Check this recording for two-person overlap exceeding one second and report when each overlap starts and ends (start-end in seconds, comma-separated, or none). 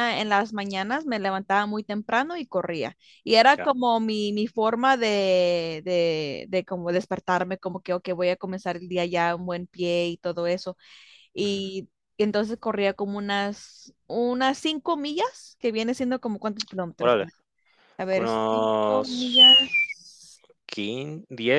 18.1-19.3